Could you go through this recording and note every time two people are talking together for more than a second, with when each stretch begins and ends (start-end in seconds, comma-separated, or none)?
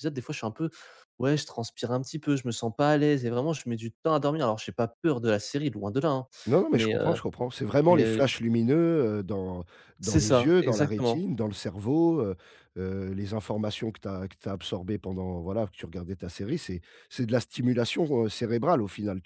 10.0-11.2